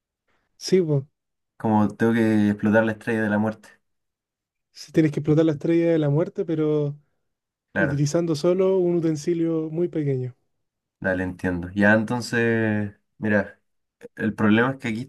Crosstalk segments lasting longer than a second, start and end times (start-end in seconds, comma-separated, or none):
none